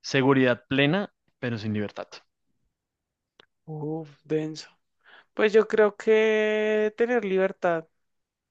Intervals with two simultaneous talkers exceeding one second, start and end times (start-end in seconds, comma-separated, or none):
none